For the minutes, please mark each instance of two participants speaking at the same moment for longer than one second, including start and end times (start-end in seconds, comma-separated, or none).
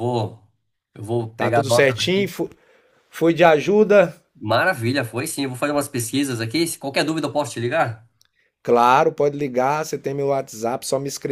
none